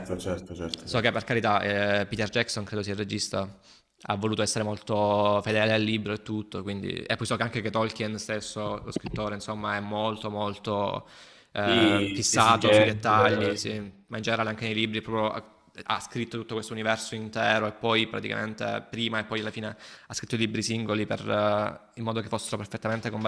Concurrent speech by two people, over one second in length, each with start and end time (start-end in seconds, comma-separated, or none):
11.6-13.0